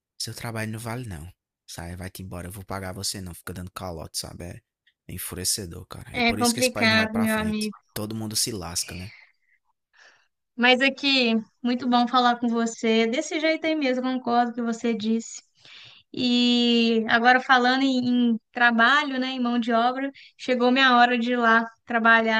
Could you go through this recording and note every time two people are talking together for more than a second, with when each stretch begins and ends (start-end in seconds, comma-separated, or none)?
6.2-7.8